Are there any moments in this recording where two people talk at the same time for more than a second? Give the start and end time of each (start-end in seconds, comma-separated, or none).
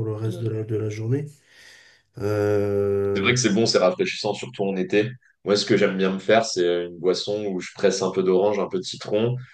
none